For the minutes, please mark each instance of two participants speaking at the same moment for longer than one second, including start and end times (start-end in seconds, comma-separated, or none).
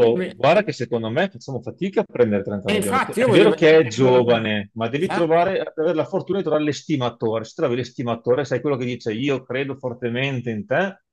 2.7-4.2